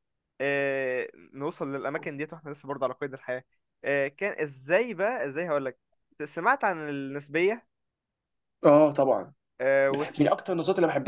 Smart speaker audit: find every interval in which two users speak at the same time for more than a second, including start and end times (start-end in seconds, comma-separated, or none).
none